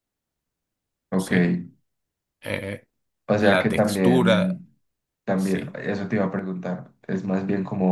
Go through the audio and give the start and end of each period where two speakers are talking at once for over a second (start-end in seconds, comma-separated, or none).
3.4-4.6